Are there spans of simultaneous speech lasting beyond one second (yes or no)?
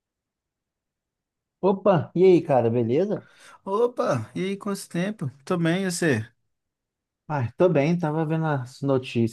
no